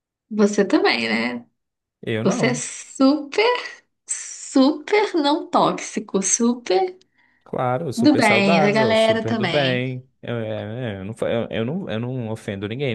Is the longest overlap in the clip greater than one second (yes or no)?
yes